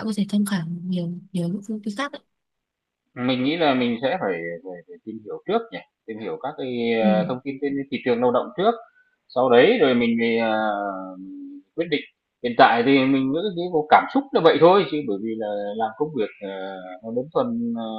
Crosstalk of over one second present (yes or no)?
no